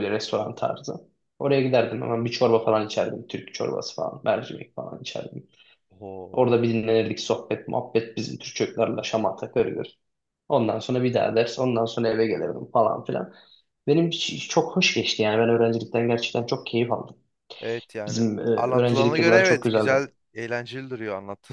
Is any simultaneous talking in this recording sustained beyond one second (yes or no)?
yes